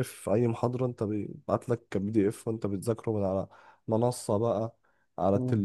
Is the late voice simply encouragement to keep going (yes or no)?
yes